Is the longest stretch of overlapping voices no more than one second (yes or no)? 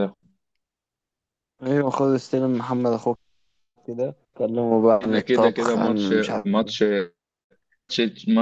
no